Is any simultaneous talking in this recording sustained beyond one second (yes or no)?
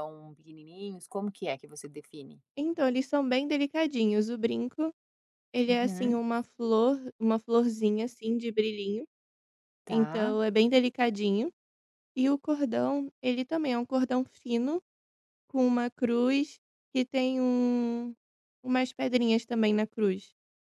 no